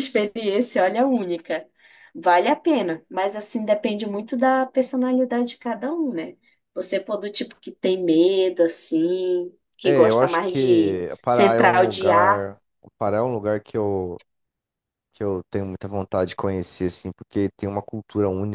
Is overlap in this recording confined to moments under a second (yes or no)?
no